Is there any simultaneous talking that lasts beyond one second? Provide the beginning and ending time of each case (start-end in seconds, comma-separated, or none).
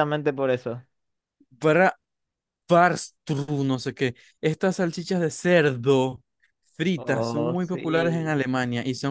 7.0-8.4